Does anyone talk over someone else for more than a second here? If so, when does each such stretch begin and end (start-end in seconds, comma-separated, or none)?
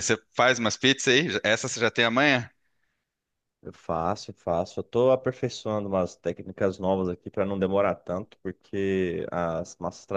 none